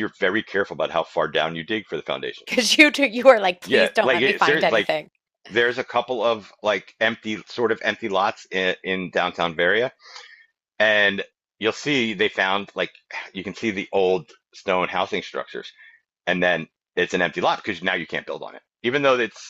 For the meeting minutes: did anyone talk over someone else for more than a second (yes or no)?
yes